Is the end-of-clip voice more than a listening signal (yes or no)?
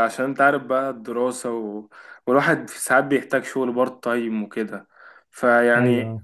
no